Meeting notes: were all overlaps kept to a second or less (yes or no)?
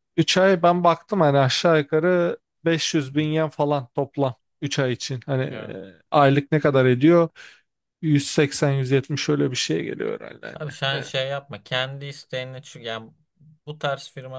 yes